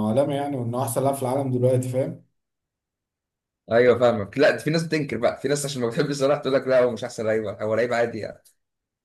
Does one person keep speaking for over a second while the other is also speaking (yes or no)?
no